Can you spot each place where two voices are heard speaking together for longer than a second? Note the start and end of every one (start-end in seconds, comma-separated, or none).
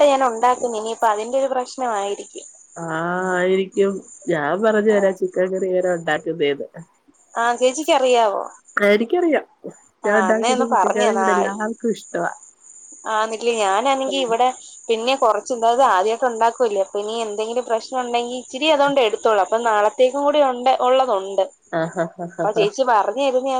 10.1-11.5